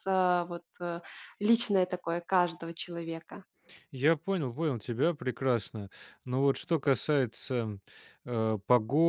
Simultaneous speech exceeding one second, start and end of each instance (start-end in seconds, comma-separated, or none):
none